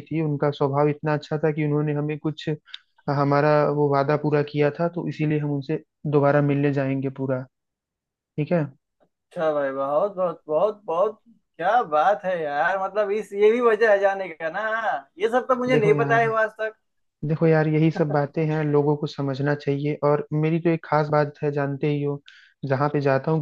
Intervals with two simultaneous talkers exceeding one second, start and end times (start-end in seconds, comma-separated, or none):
none